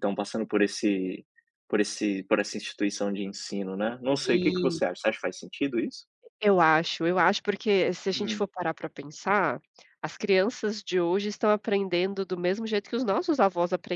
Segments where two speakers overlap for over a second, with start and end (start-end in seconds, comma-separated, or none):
none